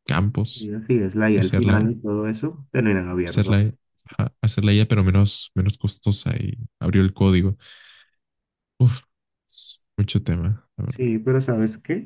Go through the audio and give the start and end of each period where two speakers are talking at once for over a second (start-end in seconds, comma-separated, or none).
none